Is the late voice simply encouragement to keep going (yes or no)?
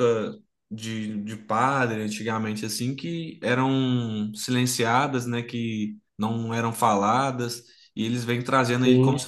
yes